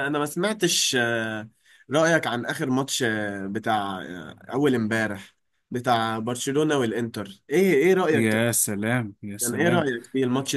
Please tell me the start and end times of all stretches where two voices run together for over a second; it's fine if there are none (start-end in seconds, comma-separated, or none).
none